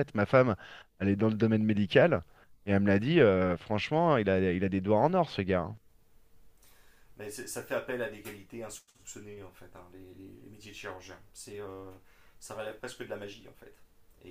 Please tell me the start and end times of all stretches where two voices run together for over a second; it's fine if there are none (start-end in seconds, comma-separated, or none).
none